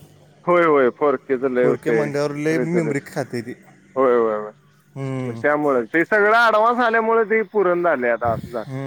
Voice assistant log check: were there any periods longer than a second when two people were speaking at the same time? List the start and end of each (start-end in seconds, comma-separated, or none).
1.6-3.0